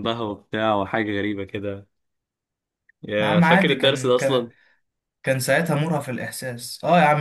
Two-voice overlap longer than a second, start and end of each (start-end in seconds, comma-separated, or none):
3.2-4.5